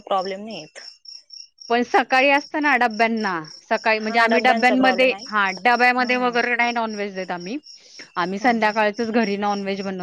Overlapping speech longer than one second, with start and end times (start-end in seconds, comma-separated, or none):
4.0-5.3